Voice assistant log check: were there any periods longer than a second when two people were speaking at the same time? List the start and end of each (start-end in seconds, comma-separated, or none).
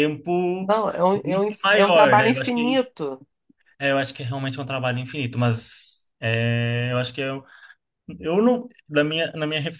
1.2-2.8